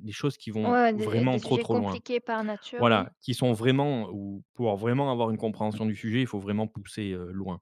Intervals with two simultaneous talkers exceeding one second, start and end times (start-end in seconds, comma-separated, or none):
0.6-2.0